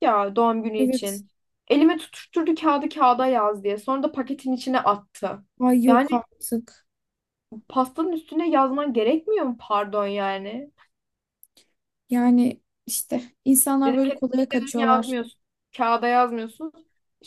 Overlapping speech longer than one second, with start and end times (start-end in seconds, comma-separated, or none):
13.8-15.2